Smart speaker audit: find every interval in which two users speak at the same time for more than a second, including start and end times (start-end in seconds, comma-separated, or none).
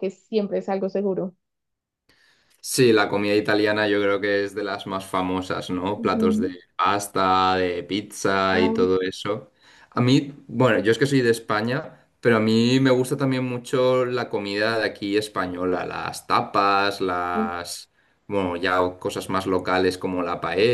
none